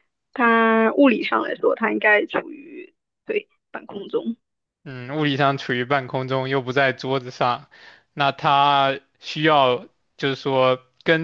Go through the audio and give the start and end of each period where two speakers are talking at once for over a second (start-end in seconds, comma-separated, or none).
none